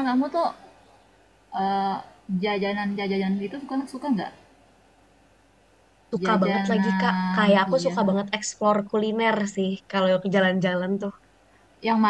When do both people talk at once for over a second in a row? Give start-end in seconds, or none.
6.2-8.0